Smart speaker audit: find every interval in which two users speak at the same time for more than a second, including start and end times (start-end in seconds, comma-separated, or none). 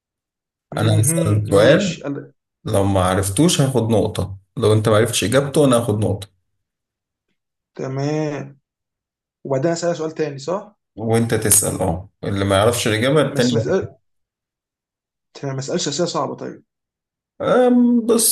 0.8-2.0